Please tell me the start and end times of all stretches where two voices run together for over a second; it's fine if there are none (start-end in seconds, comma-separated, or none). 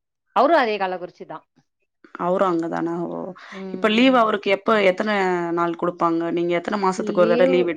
none